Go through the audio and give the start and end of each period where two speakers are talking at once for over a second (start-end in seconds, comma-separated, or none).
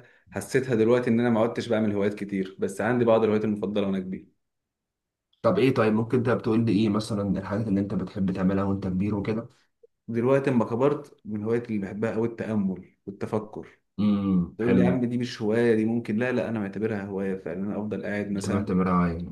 none